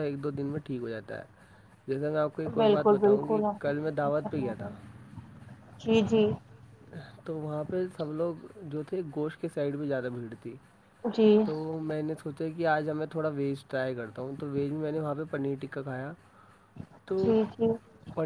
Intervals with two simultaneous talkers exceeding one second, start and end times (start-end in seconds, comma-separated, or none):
2.6-4.7